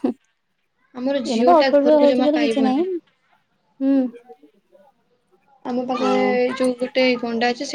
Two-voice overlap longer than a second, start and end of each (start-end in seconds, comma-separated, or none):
1.0-2.8